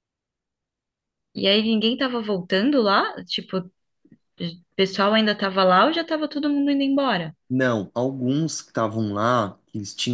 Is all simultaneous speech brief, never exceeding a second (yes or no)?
yes